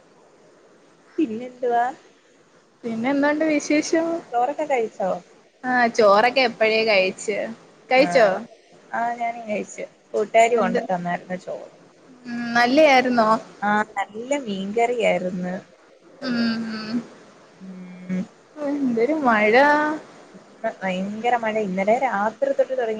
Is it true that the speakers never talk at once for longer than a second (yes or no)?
yes